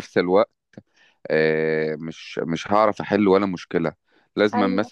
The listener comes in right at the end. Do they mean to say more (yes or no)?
no